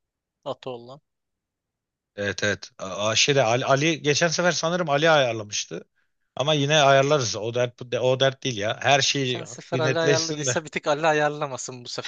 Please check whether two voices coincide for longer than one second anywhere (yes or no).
yes